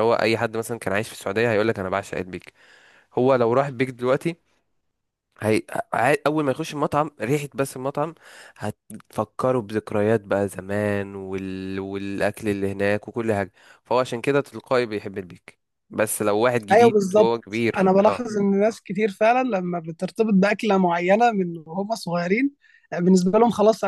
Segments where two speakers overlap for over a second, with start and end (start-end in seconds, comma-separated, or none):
16.7-18.3